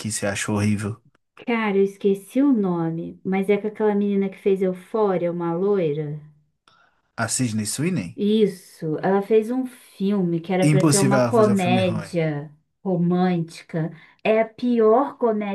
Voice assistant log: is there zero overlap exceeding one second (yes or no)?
no